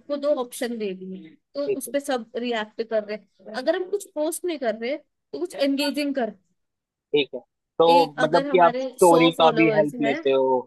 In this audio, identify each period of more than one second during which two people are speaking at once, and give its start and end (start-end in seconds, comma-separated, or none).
8.2-10.2